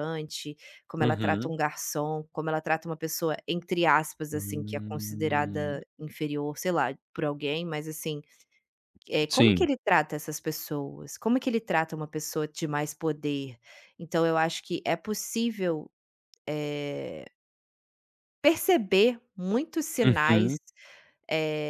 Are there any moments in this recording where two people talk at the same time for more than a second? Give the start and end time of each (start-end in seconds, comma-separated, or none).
4.3-5.8